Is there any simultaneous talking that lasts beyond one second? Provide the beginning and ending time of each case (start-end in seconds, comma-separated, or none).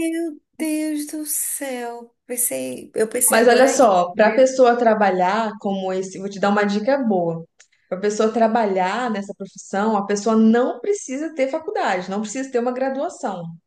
3.3-4.6